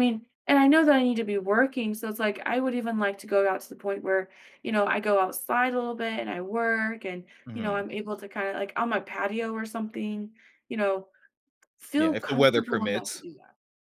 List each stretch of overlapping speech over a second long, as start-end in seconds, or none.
12.0-13.2